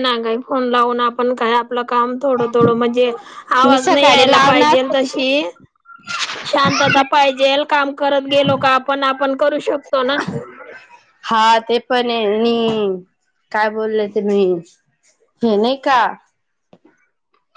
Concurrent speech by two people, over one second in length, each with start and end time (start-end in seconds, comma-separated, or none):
3.7-5.2